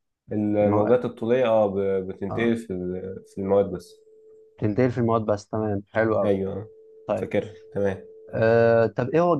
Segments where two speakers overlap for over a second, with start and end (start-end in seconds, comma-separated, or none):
none